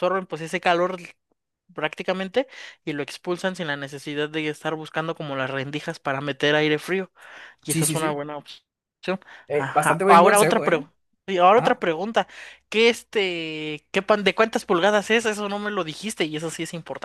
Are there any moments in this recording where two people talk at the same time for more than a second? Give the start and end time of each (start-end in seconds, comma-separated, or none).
9.5-10.9